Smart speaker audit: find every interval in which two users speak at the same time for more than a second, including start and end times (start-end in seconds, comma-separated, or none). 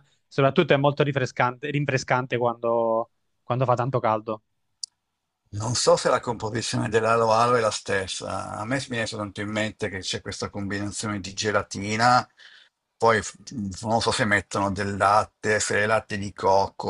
none